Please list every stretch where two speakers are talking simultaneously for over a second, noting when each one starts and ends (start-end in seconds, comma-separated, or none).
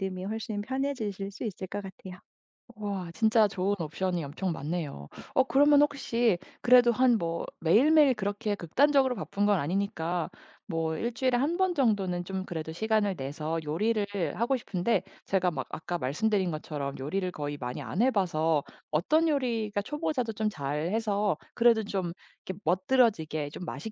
none